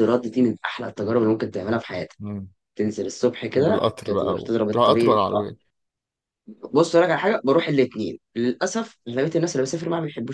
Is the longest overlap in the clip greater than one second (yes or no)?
yes